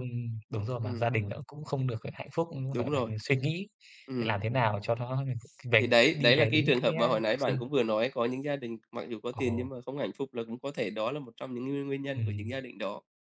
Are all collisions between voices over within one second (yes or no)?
no